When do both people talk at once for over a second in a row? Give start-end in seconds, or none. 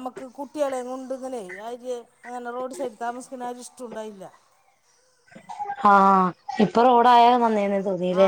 none